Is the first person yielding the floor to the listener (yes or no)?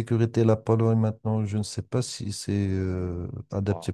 no